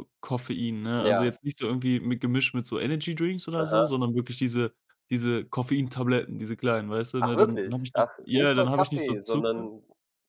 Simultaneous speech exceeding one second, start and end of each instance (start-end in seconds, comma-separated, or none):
7.2-9.7